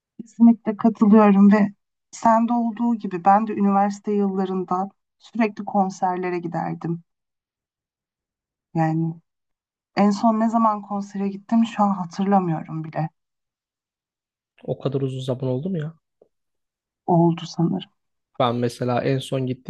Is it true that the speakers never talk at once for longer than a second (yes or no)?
yes